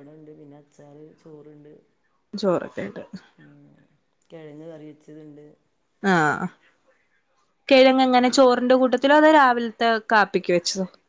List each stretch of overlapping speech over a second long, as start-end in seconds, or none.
none